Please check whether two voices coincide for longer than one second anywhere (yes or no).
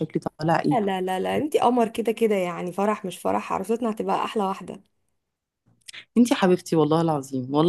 no